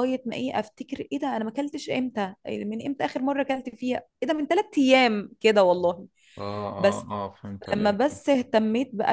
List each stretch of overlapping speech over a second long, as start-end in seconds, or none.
none